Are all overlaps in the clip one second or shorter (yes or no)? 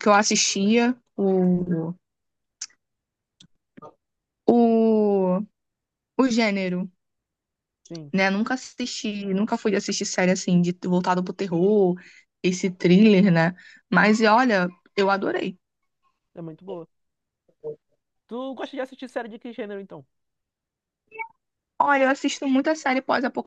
yes